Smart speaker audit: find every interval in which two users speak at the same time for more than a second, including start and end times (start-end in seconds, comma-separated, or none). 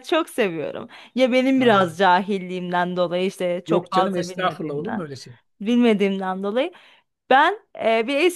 3.7-5.1